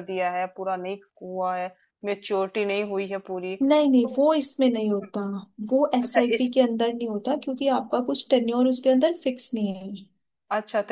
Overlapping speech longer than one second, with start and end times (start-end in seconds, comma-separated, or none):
none